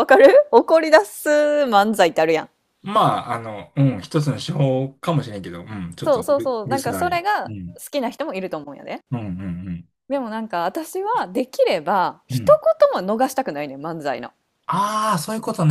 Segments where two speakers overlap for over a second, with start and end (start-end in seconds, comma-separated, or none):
6.0-7.8